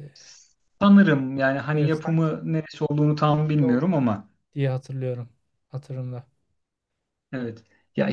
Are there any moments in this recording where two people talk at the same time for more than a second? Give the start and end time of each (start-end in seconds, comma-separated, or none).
none